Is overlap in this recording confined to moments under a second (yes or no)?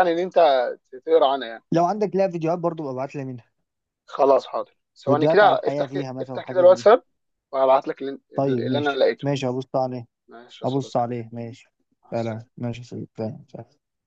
no